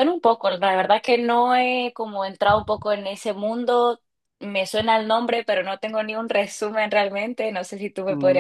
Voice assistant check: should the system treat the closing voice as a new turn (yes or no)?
yes